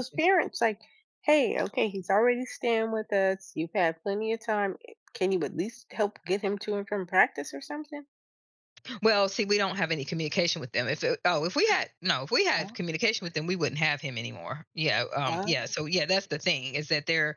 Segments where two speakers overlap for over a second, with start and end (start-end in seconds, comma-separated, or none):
none